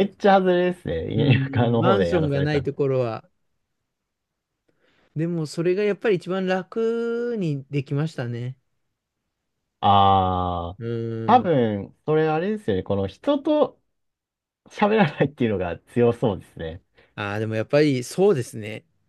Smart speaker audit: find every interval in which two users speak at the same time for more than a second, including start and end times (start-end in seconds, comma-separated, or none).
1.2-2.7